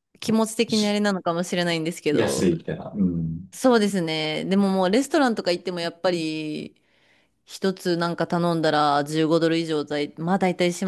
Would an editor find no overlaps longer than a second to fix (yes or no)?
yes